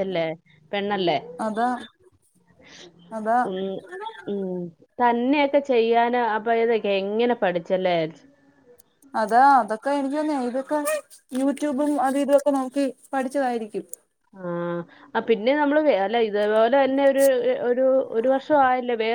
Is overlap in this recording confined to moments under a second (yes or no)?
yes